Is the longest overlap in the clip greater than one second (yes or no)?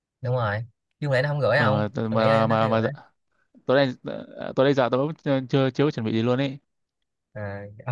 yes